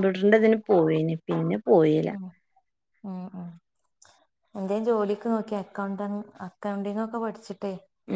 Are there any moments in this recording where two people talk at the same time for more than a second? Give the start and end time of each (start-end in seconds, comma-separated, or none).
none